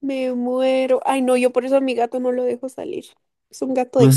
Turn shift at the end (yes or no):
yes